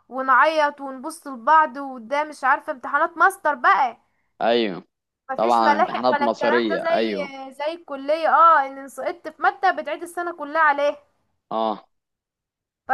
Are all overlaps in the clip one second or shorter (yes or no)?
no